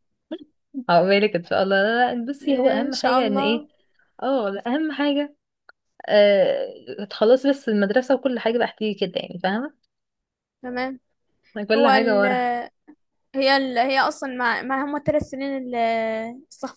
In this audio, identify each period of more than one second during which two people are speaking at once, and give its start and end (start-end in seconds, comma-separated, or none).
2.4-3.7